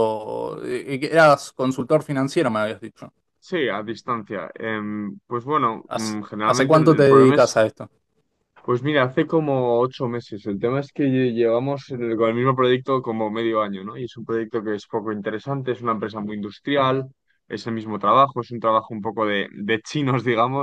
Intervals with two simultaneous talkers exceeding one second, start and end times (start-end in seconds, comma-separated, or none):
5.9-7.6